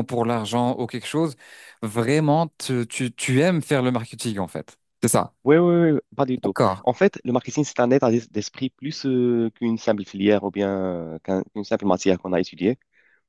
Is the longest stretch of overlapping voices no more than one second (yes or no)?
yes